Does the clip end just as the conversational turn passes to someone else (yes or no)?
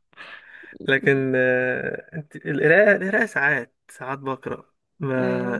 no